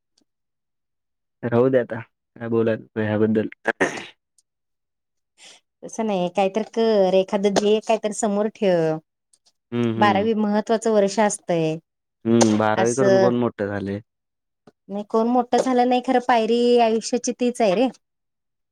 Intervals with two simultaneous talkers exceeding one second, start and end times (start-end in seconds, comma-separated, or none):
none